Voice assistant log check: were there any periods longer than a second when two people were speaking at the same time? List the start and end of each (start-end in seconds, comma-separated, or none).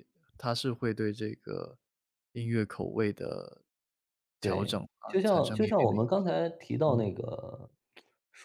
4.4-6.0